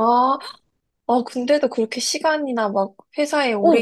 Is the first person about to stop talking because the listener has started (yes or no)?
yes